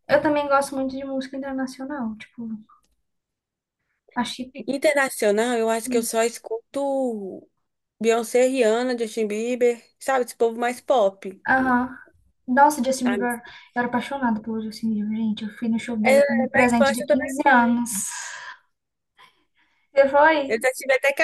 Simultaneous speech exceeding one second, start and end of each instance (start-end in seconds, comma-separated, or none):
16.0-17.3